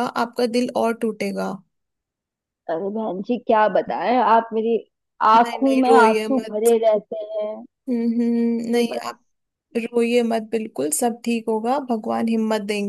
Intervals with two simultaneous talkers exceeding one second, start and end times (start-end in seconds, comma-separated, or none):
5.4-6.7